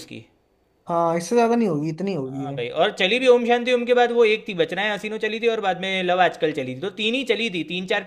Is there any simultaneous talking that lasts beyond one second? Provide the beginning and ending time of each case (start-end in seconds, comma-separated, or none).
none